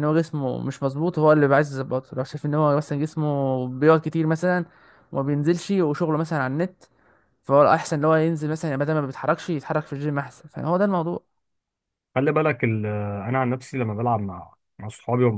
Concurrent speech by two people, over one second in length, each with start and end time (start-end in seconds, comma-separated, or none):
none